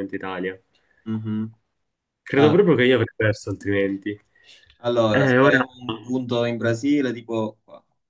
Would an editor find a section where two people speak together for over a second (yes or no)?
no